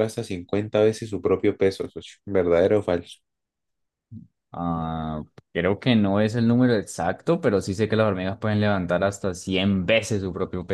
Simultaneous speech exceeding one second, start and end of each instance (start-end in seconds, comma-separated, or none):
none